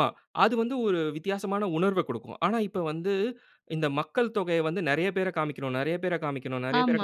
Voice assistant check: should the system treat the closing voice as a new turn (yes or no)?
yes